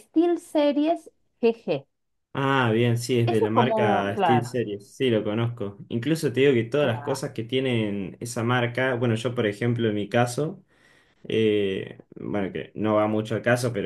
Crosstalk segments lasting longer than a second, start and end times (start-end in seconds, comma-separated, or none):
3.3-4.6